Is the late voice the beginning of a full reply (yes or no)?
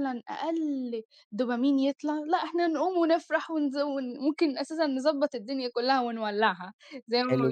yes